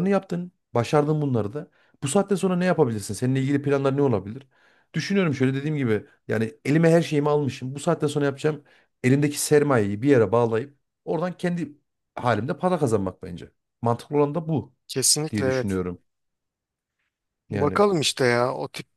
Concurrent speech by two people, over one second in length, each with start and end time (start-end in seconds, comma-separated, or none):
none